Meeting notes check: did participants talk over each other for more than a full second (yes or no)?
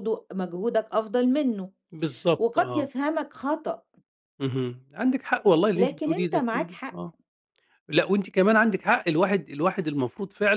yes